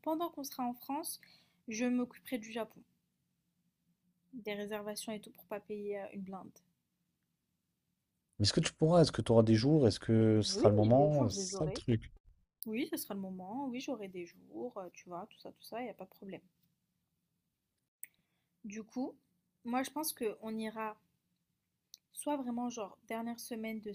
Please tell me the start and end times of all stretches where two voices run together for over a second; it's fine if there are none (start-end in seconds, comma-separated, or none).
10.5-11.8